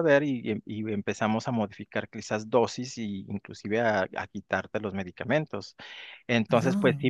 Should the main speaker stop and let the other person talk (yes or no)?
no